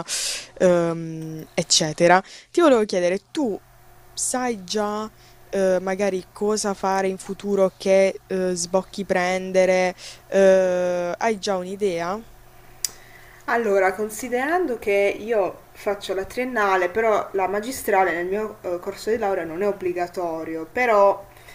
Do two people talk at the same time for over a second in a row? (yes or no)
no